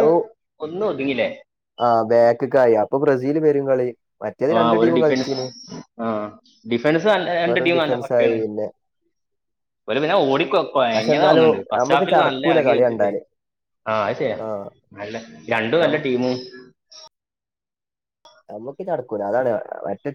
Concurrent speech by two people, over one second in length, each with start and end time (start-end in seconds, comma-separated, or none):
10.9-13.1